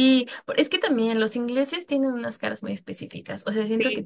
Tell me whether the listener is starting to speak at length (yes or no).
no